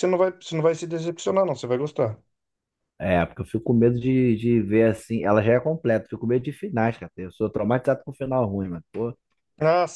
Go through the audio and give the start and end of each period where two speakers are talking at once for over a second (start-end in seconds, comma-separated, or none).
none